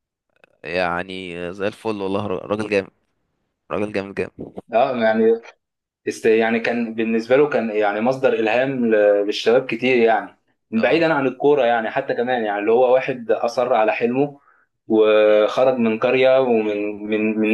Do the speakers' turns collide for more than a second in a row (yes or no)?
no